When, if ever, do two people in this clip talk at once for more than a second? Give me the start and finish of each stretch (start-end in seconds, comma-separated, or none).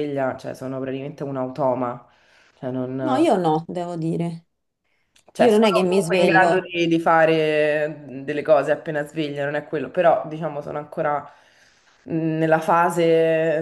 5.4-6.6